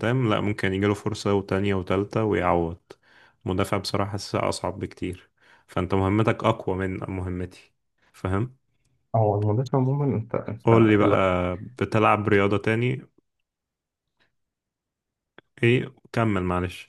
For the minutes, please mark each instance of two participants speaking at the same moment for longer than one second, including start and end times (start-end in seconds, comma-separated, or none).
none